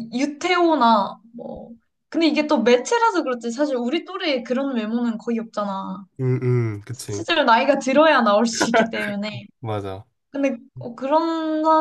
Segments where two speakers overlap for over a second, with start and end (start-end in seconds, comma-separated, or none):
none